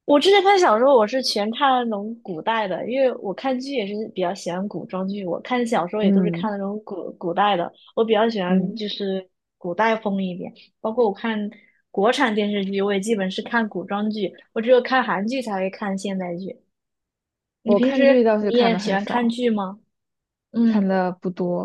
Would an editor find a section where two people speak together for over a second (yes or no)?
yes